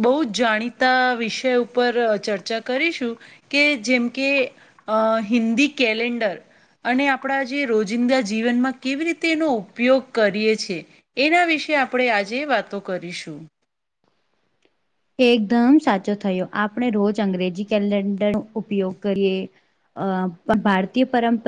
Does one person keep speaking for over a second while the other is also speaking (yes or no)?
no